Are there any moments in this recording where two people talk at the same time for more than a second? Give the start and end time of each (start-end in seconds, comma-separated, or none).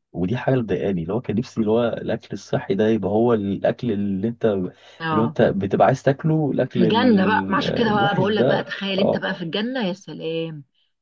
6.7-9.2